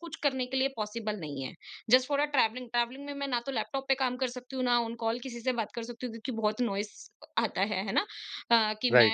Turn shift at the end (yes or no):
no